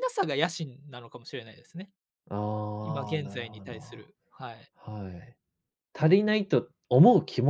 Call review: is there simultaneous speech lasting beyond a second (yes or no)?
yes